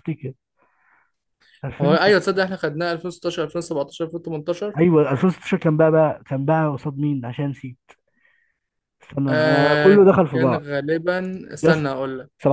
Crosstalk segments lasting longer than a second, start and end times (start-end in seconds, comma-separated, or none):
9.3-10.7